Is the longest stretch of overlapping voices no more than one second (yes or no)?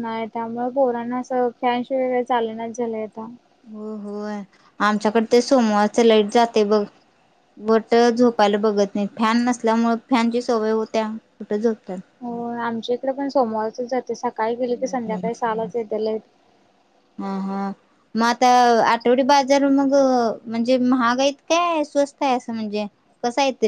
yes